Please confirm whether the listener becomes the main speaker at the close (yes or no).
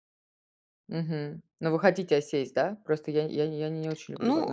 yes